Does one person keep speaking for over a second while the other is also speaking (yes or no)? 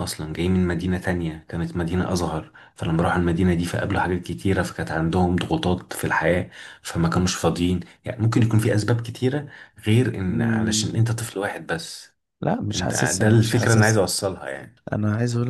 yes